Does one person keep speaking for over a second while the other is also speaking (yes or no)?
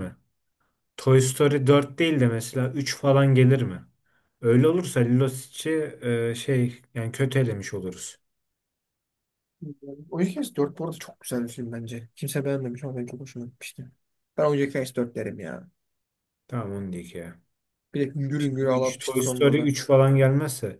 yes